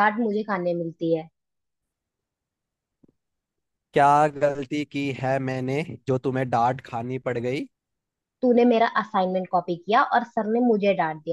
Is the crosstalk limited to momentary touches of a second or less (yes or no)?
yes